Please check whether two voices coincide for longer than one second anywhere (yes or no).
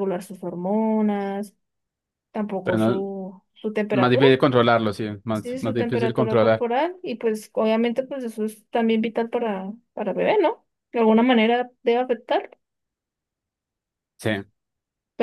yes